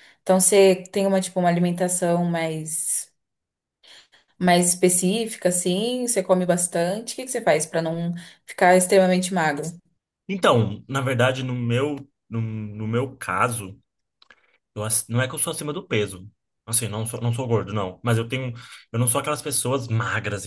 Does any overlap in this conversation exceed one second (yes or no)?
no